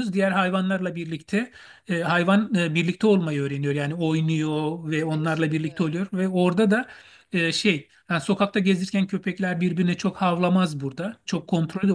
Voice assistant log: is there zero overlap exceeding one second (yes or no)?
no